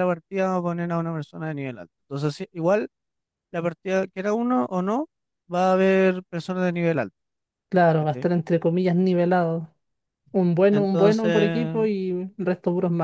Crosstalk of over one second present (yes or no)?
yes